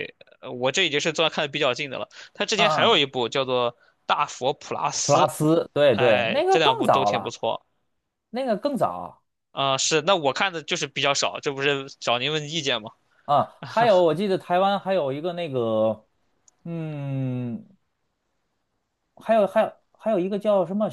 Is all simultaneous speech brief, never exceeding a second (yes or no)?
no